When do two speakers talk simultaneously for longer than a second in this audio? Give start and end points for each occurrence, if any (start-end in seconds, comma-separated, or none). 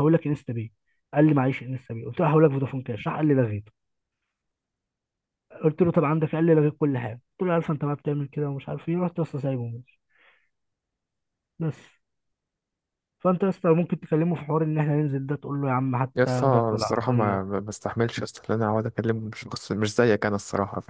16.1-17.4